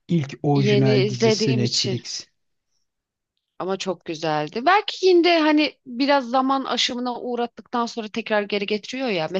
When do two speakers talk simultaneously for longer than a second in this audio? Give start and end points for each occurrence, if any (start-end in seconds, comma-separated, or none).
0.5-2.0